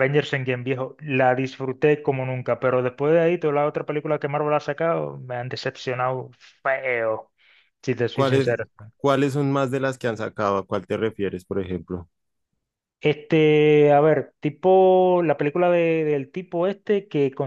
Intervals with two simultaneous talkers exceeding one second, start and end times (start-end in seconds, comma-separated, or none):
none